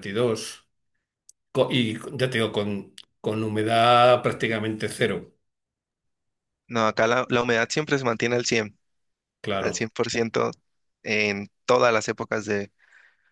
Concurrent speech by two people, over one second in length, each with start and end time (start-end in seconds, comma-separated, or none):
none